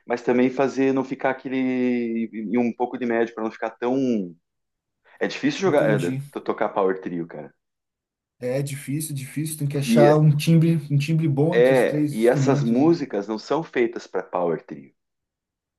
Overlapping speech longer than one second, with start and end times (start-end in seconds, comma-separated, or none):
11.5-13.0